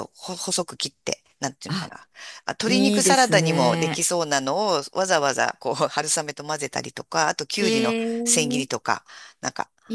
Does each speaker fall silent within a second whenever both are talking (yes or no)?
no